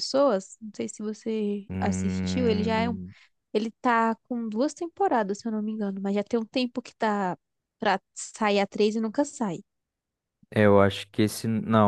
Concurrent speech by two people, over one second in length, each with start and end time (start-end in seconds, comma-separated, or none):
1.7-3.0